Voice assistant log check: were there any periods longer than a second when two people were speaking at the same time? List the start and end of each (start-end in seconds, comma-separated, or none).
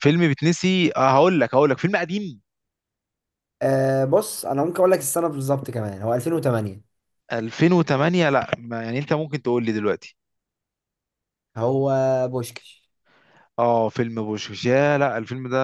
none